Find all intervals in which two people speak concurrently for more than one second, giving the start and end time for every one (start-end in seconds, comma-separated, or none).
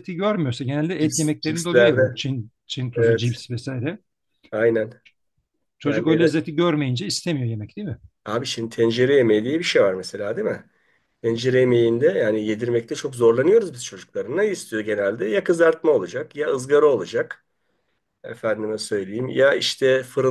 1.0-2.2